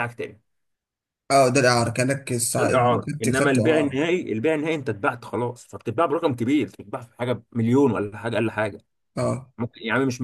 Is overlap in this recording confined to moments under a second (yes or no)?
no